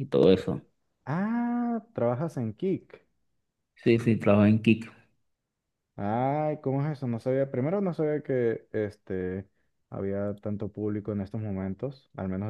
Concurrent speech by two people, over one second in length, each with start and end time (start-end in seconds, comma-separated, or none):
none